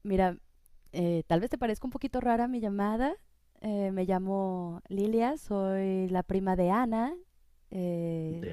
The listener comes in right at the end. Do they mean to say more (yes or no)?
no